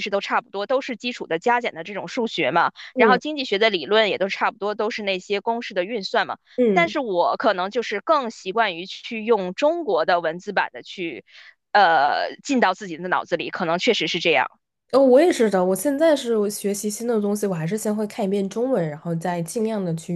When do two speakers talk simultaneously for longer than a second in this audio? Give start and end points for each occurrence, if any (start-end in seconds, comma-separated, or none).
none